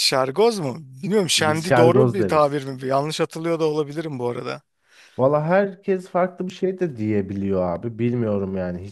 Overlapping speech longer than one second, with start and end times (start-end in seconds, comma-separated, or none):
1.4-2.6